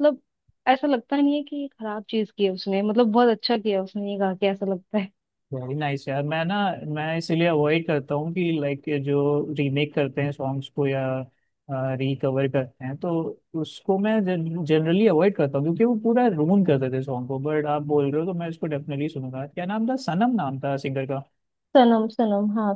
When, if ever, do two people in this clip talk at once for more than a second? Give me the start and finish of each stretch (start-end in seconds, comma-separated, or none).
none